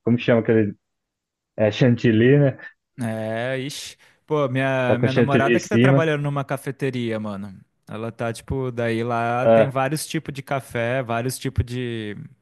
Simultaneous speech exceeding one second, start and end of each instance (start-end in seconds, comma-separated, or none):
4.8-6.1